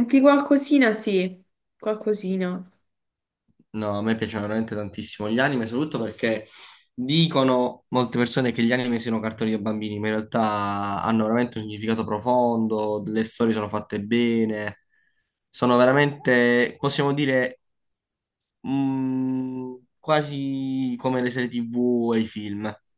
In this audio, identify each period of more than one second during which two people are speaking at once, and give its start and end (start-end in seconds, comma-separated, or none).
none